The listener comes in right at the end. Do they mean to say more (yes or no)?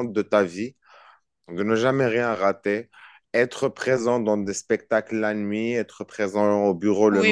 yes